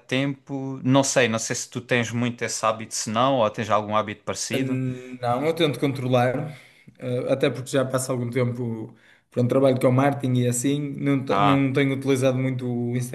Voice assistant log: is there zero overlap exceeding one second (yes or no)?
yes